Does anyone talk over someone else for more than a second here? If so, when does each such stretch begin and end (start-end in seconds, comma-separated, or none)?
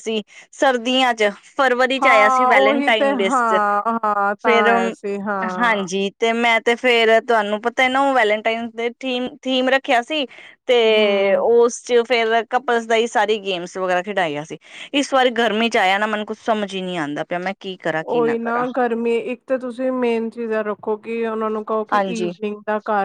2.0-3.6